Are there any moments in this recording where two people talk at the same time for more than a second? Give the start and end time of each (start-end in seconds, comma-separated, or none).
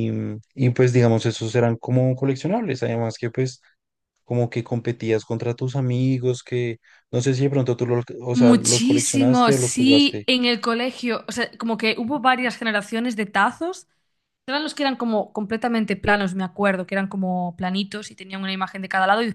8.3-10.3